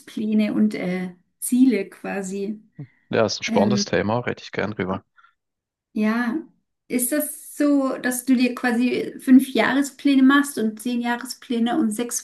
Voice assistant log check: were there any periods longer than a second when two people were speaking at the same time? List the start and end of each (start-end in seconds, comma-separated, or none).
none